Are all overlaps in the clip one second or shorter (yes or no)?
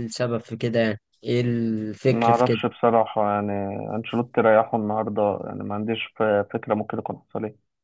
yes